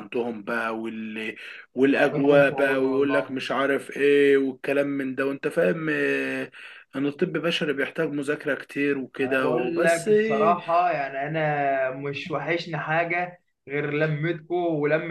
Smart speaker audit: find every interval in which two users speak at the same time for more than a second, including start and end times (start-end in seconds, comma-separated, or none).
2.1-3.4, 9.2-10.6